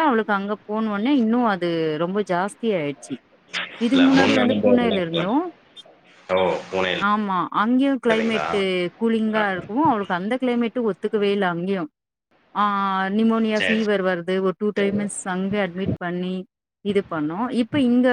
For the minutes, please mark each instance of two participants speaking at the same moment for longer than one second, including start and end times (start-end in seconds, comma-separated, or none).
3.9-5.3